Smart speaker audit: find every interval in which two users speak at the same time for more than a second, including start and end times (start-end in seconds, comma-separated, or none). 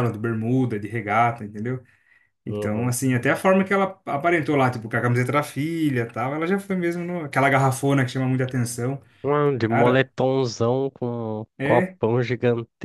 none